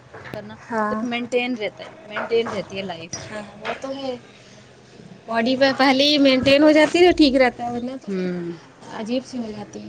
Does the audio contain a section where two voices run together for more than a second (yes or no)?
no